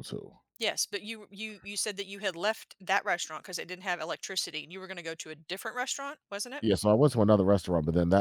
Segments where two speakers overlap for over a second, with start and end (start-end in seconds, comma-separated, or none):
none